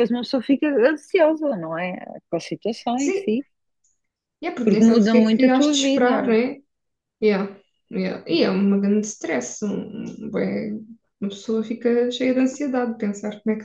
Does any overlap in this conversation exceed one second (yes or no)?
yes